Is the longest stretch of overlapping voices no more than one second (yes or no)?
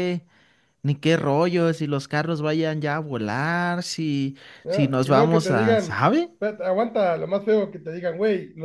no